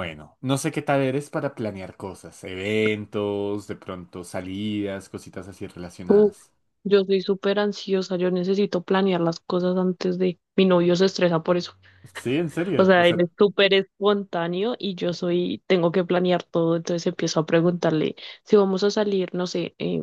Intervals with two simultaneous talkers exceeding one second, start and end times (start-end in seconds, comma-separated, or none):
none